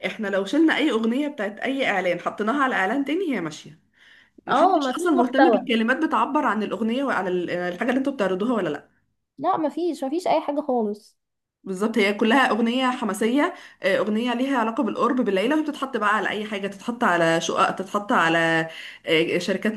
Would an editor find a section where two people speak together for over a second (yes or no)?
yes